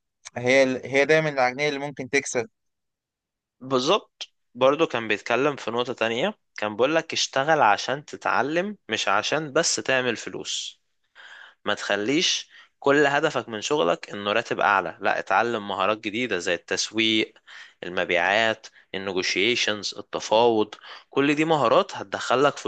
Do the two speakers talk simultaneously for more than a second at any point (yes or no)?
no